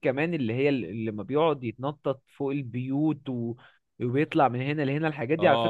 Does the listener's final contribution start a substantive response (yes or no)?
yes